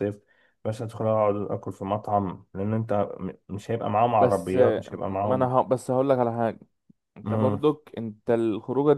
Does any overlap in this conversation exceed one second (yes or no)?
yes